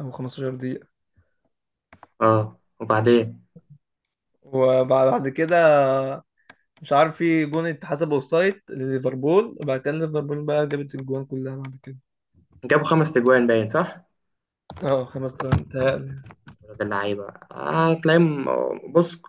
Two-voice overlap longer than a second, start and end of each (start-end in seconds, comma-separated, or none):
none